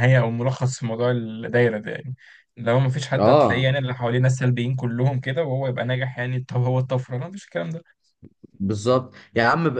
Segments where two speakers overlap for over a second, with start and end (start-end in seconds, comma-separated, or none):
none